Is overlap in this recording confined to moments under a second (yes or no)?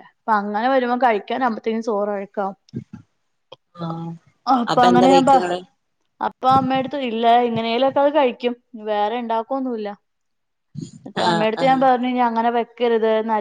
yes